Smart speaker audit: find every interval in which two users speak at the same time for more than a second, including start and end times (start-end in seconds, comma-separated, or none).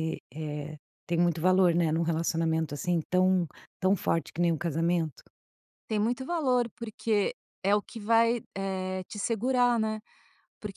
none